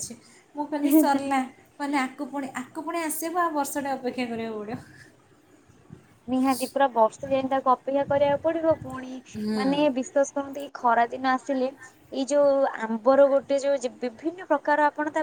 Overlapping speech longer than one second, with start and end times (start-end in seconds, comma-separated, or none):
none